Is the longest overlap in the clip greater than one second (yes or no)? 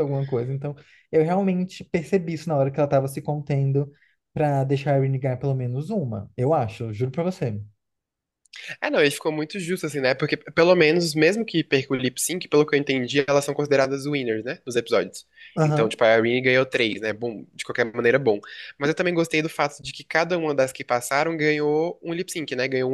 no